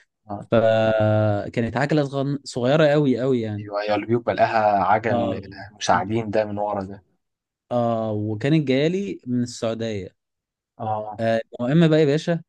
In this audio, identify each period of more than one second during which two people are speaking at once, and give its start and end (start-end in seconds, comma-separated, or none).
none